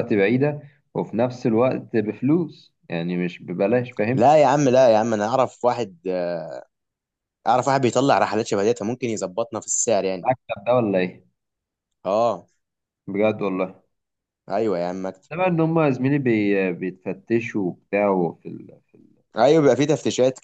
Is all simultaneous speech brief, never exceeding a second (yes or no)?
yes